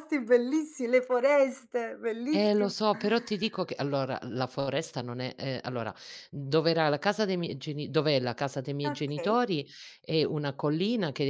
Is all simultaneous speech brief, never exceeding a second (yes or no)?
yes